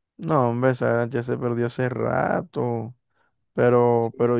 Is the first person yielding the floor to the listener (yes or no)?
no